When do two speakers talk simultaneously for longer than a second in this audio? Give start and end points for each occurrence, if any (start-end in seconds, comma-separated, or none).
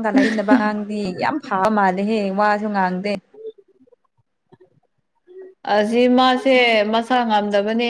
none